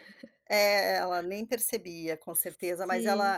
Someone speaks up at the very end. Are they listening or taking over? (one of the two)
listening